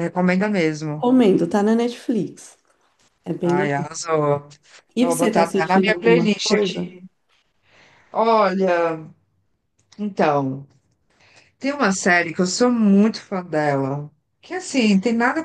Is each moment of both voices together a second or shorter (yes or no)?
no